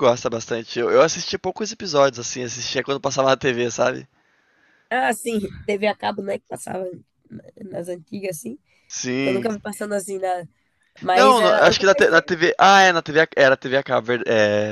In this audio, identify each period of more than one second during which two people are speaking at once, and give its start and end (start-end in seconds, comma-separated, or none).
11.1-12.4